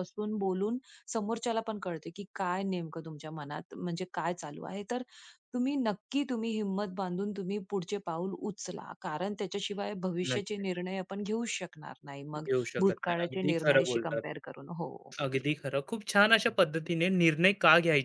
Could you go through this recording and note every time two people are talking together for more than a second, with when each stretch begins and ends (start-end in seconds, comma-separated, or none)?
12.4-14.2